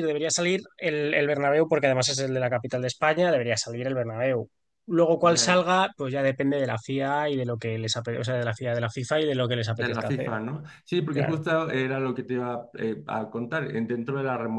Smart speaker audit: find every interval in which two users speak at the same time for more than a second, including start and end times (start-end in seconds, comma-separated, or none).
none